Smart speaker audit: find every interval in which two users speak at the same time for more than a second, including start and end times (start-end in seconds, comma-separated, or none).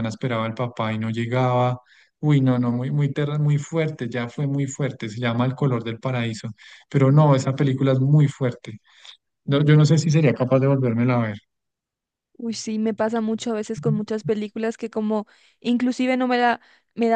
none